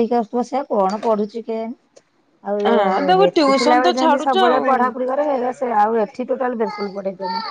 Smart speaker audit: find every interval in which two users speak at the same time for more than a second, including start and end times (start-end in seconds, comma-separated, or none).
2.7-4.7